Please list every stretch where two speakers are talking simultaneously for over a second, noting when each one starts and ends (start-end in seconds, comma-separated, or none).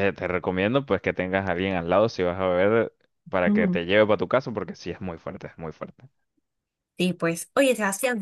none